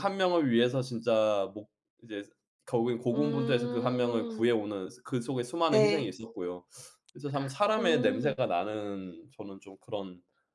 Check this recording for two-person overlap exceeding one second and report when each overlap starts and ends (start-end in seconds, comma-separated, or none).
3.1-4.5